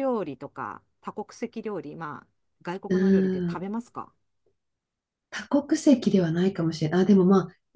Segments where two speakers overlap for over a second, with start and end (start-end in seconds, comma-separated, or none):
none